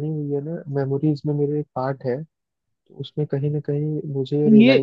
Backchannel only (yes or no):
no